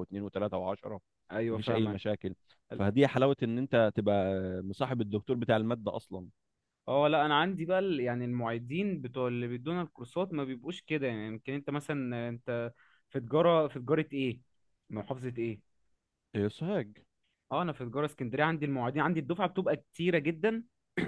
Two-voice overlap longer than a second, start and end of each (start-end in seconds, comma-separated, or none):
none